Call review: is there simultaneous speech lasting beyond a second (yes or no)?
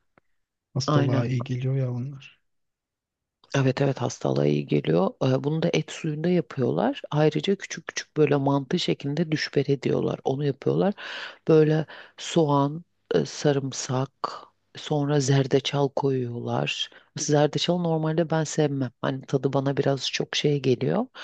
no